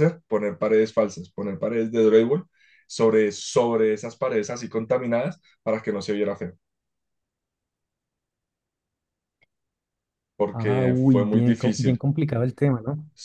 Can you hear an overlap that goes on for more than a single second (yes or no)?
yes